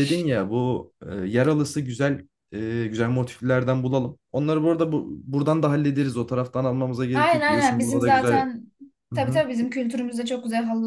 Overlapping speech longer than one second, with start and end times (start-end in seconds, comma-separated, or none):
7.1-8.5